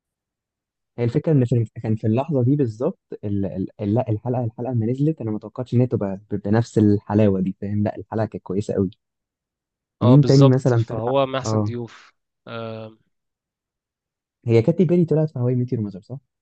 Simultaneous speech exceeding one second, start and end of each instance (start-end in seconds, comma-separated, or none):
10.0-11.7